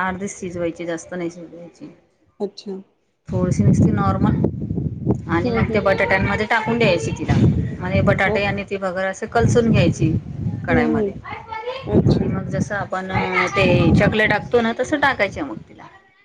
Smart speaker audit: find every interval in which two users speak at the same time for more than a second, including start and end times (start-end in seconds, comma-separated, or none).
none